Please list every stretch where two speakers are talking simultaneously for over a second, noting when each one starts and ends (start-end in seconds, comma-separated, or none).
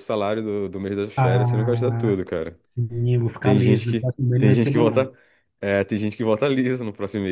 1.1-2.6, 3.4-5.1